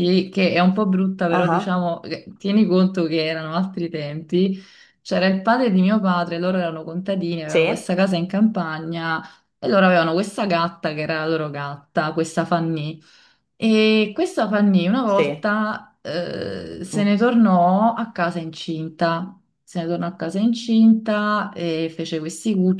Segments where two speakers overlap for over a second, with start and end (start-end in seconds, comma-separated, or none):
none